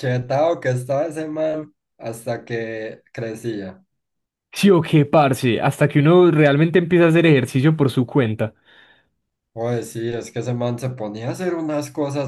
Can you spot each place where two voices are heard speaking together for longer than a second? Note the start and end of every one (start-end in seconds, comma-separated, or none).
none